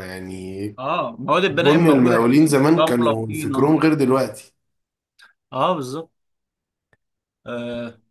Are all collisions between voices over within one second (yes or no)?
no